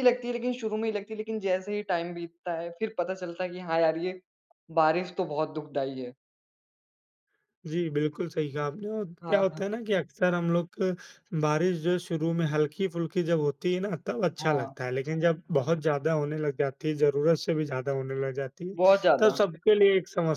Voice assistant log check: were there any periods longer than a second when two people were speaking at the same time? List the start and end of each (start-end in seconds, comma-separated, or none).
none